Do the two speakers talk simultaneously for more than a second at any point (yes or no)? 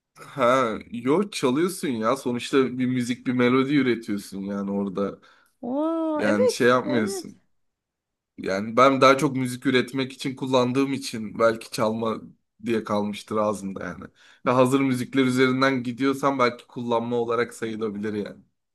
yes